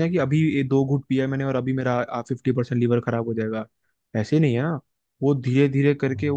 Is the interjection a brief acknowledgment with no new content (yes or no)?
yes